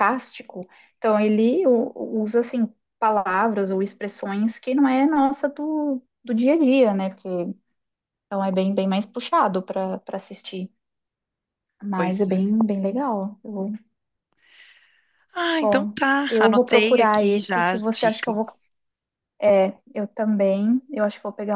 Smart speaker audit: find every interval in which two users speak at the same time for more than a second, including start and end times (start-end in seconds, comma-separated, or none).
15.6-18.5